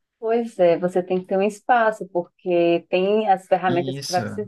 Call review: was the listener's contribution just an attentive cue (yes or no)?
yes